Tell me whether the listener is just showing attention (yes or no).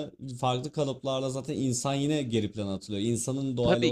no